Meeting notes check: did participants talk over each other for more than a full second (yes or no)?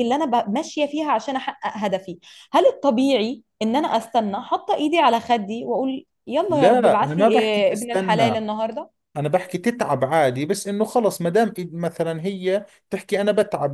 yes